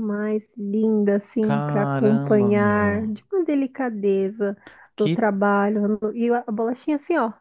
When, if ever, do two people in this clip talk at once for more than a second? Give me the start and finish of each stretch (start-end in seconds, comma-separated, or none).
1.4-3.1